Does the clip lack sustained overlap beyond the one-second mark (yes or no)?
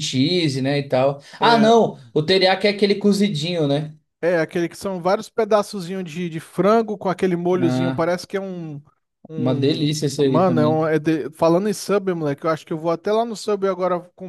no